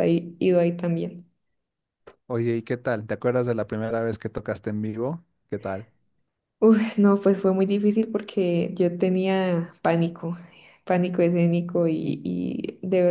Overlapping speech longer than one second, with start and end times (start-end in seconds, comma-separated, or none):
none